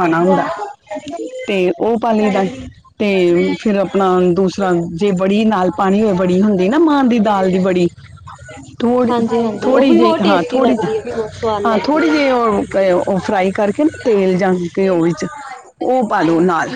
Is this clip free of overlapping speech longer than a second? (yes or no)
yes